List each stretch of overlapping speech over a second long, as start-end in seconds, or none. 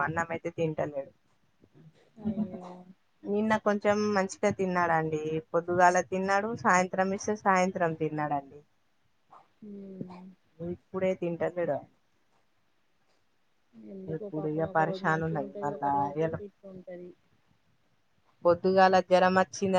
14.2-16.4